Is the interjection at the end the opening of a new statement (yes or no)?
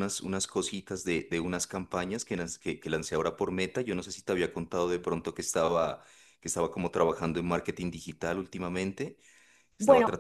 no